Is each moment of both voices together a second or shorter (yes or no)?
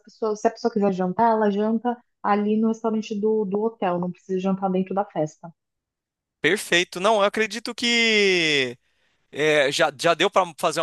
yes